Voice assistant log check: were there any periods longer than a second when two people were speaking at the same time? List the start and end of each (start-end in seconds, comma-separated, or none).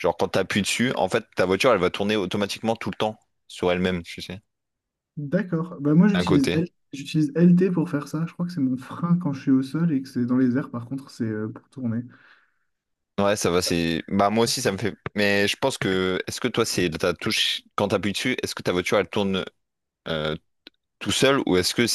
none